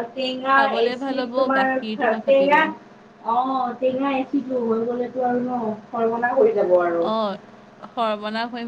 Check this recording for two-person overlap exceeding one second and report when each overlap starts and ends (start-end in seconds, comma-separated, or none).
1.0-2.6